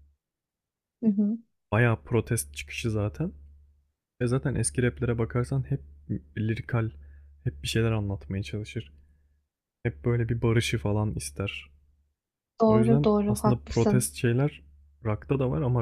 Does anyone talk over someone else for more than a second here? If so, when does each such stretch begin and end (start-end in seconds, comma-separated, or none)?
12.7-14.1